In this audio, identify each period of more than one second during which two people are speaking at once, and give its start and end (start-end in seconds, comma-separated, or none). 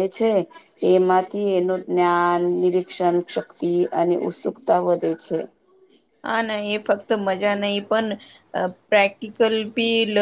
none